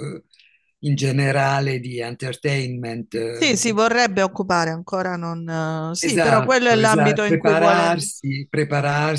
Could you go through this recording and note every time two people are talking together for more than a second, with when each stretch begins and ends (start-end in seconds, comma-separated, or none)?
6.0-8.0